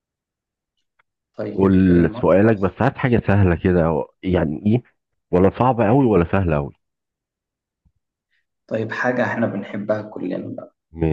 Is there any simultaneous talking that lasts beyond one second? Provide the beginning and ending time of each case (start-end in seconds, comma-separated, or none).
1.5-2.8